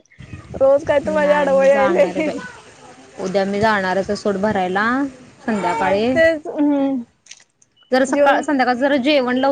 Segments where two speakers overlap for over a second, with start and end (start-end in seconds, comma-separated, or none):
1.0-2.3